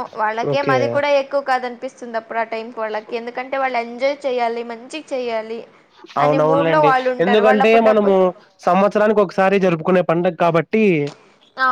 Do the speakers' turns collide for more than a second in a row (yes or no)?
yes